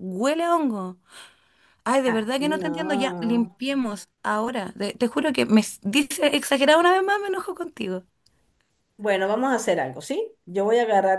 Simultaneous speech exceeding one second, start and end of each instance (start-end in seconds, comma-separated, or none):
2.0-3.5